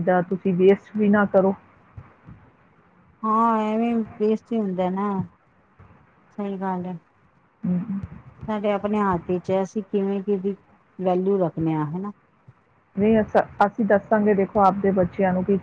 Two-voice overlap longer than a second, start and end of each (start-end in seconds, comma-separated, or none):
none